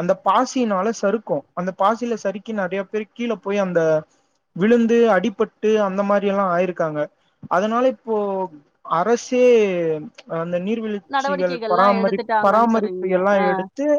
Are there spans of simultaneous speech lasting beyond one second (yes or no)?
yes